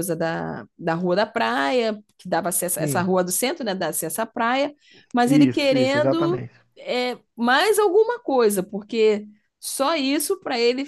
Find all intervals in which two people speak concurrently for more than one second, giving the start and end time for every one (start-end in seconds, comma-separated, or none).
5.2-6.5